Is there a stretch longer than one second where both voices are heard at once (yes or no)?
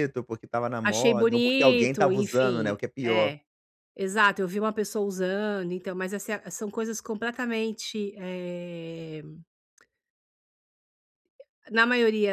yes